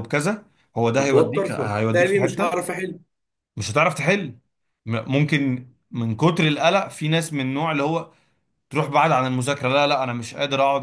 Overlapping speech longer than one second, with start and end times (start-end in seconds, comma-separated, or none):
1.0-2.7